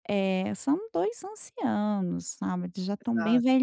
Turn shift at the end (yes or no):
no